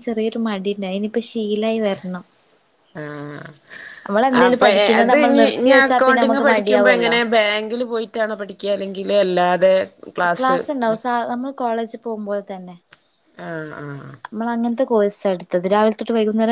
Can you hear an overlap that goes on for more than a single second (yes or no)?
yes